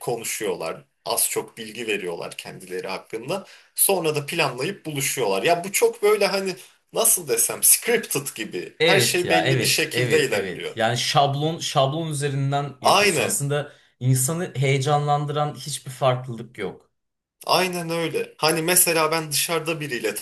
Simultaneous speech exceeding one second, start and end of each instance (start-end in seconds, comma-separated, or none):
8.8-10.8